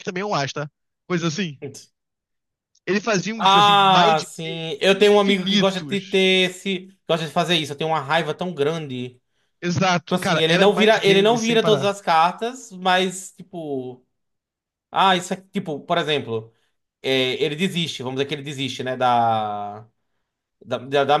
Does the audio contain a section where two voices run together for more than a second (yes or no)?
yes